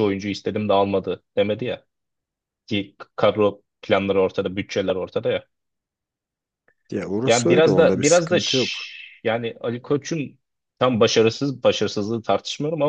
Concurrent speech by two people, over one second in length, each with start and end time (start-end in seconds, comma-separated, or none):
7.3-8.7